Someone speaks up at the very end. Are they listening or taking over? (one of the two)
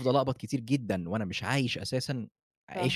taking over